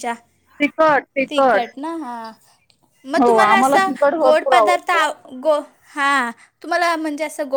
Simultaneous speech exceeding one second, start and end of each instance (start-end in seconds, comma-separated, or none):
3.2-5.1